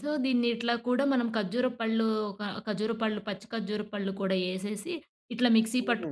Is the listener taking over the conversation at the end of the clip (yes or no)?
no